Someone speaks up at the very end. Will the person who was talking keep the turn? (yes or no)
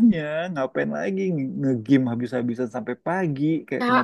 no